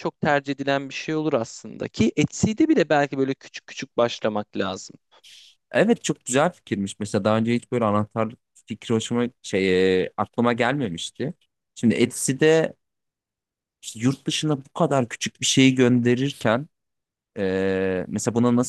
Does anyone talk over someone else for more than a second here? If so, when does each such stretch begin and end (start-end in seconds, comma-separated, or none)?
none